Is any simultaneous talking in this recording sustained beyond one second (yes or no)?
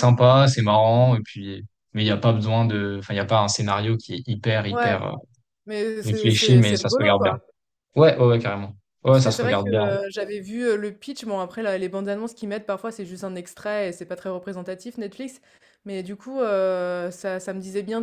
yes